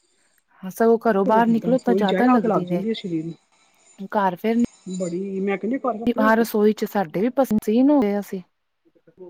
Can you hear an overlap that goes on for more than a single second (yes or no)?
yes